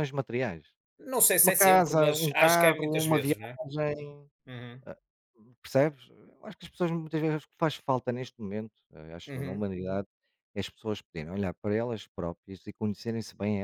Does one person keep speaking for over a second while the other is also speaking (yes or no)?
yes